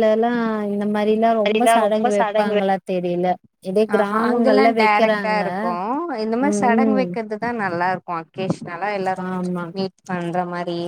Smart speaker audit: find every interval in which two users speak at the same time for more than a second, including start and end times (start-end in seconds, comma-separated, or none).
4.0-5.4